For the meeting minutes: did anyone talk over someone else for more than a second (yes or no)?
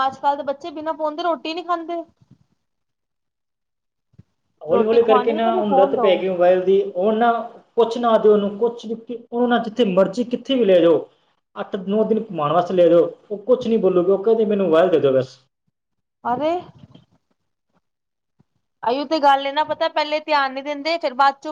yes